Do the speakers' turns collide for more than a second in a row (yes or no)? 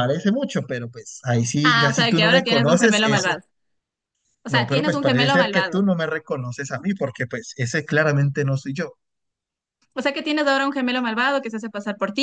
yes